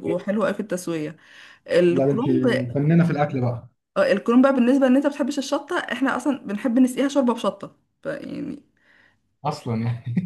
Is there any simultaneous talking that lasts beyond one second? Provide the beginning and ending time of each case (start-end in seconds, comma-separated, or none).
none